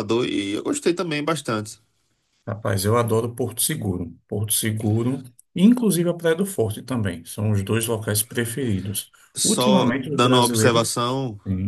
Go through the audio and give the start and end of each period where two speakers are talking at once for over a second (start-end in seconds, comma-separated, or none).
9.4-10.9